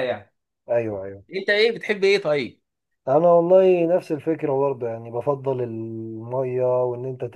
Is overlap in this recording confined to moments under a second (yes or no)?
yes